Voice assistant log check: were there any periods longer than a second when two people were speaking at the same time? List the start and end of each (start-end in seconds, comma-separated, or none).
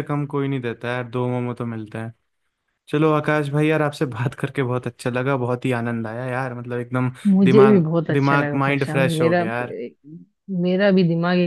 7.3-9.4